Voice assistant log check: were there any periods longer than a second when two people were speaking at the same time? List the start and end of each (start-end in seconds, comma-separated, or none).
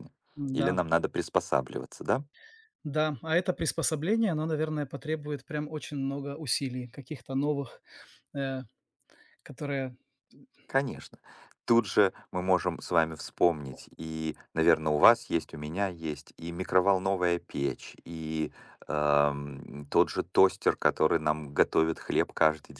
none